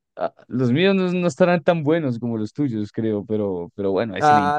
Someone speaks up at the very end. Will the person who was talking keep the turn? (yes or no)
no